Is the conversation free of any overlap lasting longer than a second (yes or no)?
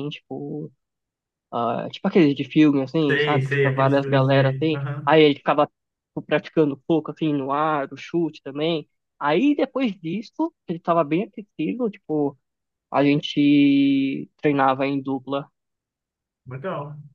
no